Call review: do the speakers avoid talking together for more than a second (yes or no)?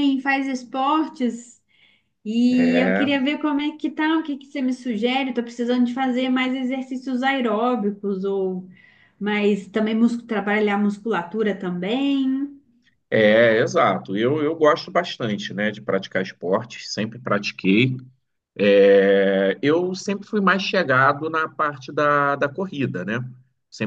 yes